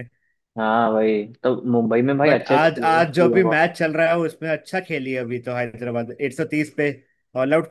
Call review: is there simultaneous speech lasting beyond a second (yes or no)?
yes